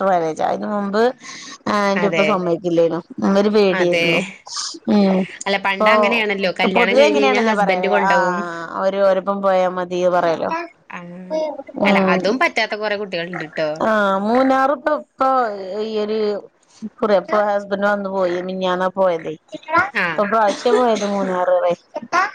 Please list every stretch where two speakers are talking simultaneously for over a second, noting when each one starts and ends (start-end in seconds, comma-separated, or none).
5.8-8.4